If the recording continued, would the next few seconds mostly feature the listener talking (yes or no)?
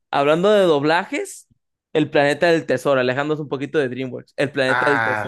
yes